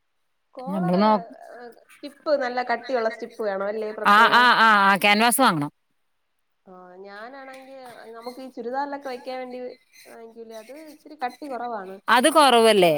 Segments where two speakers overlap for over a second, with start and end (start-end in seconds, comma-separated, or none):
none